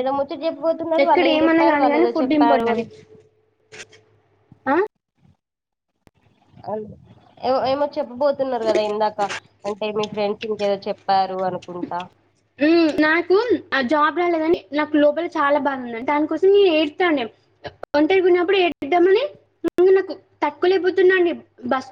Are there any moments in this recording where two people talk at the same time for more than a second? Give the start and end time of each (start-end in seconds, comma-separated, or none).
1.0-2.8